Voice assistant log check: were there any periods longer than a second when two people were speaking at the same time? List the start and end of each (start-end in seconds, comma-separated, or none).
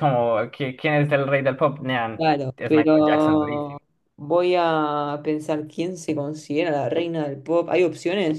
2.2-3.8